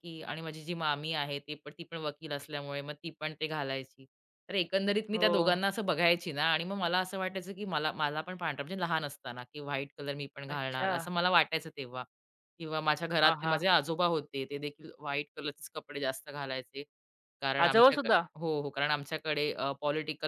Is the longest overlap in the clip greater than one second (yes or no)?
no